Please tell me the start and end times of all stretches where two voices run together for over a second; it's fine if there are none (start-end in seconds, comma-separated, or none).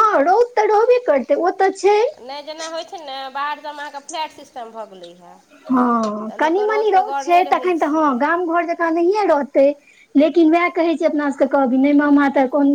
6.3-8.1